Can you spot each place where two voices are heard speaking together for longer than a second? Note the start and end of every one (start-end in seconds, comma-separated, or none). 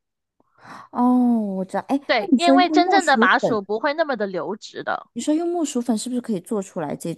2.0-3.6